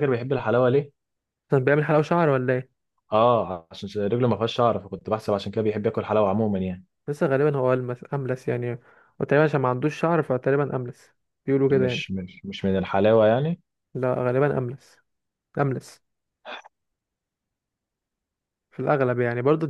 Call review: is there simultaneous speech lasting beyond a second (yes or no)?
no